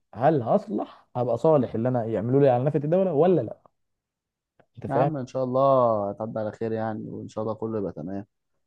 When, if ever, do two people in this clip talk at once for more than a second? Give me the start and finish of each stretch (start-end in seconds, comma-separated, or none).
none